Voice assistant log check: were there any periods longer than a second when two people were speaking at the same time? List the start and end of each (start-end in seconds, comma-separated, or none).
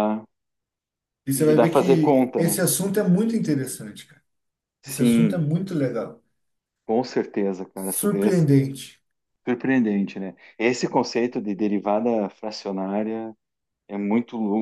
1.3-2.6